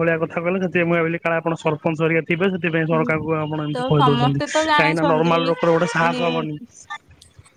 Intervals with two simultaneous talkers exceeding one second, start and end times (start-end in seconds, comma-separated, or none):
3.7-5.4